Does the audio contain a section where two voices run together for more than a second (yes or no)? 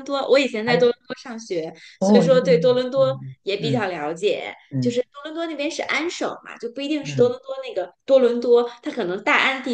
yes